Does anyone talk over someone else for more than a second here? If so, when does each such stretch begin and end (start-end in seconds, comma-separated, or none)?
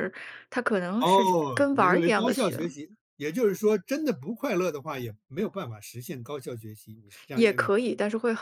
1.0-2.6